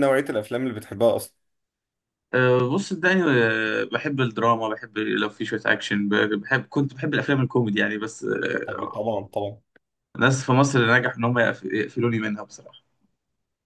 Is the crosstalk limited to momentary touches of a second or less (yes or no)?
yes